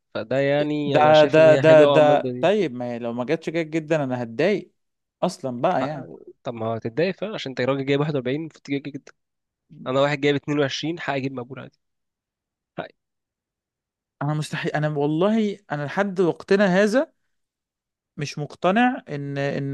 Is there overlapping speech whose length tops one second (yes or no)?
yes